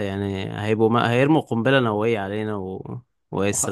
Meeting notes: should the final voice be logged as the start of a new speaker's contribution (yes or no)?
no